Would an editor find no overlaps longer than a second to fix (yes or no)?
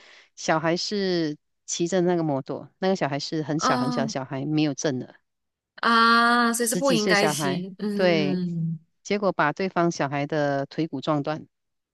no